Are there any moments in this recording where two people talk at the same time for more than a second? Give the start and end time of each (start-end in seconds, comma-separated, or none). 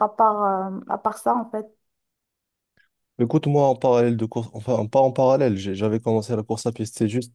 none